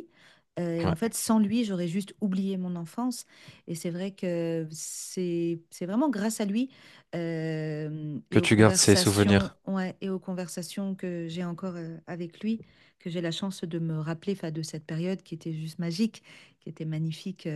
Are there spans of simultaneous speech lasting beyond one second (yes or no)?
yes